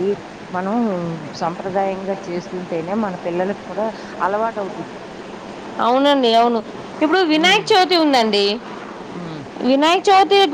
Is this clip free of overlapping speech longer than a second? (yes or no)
yes